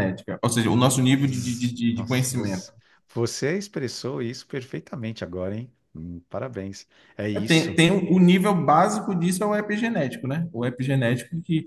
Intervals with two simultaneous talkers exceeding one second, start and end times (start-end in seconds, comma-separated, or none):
1.1-2.7